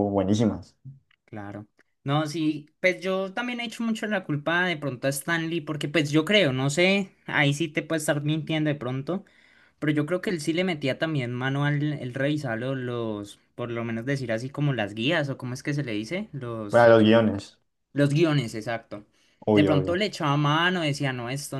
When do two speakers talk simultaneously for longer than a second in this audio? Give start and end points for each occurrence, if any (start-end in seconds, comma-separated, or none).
none